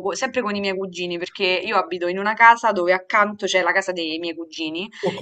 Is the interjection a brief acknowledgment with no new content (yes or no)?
yes